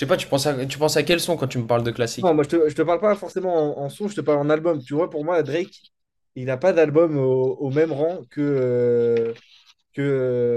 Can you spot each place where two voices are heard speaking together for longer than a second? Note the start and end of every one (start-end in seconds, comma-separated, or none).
none